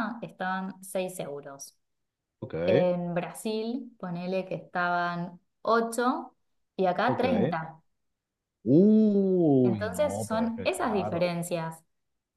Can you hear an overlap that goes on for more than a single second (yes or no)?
yes